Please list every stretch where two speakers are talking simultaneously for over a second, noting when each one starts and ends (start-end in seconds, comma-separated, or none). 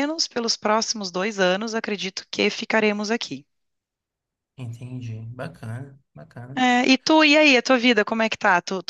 none